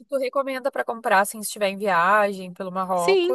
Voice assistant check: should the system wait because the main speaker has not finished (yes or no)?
no